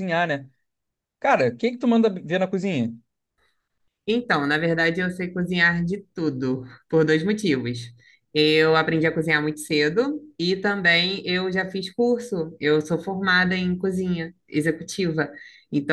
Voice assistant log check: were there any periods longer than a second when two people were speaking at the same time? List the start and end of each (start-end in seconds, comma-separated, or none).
none